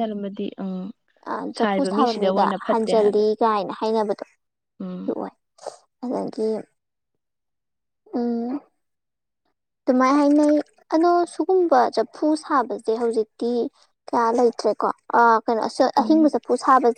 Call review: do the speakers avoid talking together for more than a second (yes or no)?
no